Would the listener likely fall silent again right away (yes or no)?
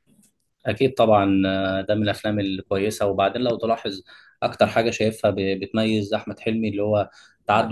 yes